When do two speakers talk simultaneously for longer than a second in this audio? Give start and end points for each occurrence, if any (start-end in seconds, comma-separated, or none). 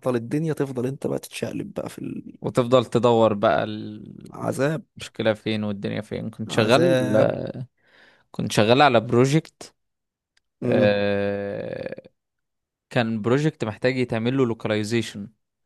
none